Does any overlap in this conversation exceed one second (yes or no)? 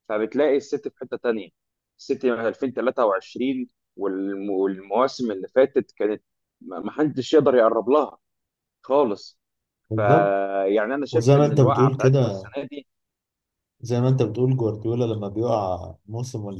yes